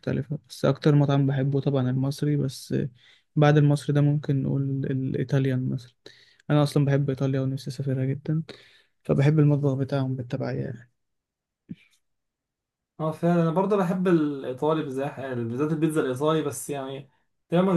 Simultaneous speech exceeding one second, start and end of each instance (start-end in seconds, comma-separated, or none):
none